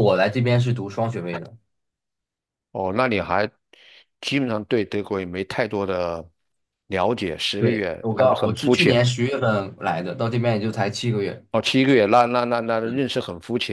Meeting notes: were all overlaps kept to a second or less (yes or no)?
no